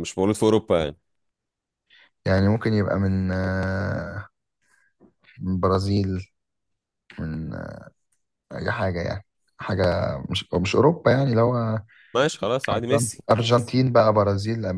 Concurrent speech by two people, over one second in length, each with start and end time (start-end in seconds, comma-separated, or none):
none